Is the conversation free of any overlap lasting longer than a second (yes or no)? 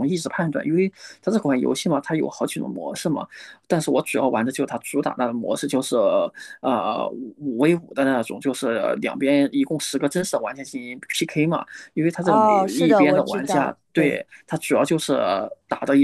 no